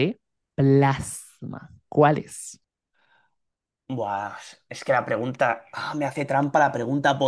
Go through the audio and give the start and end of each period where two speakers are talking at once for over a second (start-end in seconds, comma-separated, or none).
none